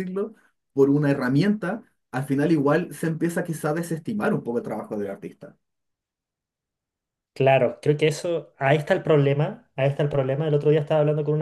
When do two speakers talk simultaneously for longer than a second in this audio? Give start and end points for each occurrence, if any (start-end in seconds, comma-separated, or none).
none